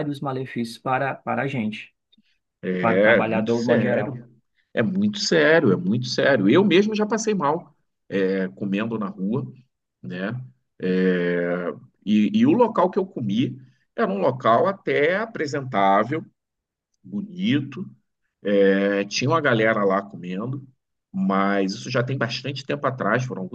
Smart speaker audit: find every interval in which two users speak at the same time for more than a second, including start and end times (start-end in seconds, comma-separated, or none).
2.8-4.1